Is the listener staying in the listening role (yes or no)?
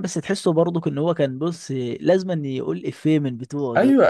no